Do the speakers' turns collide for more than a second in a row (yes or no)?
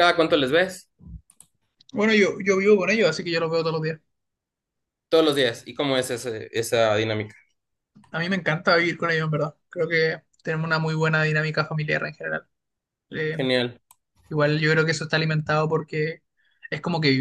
no